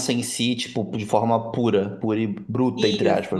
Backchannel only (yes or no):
no